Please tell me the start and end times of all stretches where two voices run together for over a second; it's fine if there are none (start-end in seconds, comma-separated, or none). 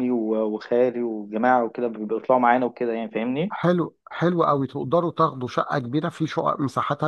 none